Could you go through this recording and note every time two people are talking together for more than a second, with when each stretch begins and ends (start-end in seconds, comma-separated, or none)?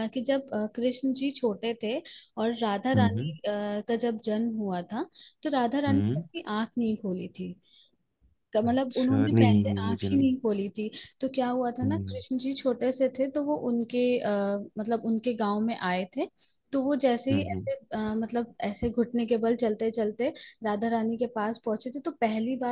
8.6-10.3